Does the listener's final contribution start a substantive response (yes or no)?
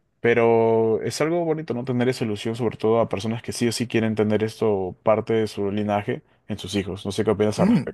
yes